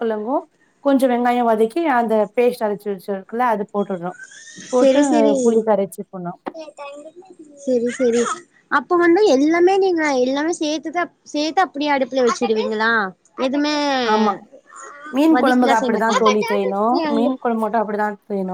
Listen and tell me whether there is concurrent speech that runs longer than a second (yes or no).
yes